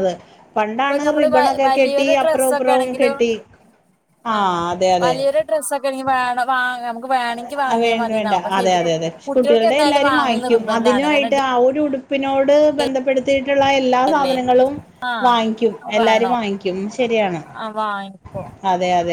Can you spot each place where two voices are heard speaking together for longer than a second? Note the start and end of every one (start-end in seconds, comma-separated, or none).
0.7-3.1, 9.7-11.4